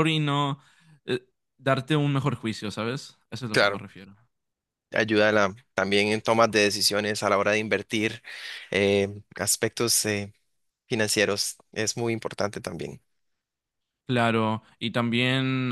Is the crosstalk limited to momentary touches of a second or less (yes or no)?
yes